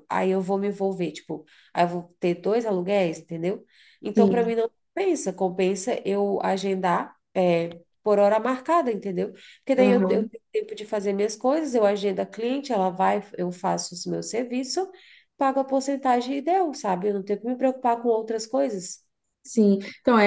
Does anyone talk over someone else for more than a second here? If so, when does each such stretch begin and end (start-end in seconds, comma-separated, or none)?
none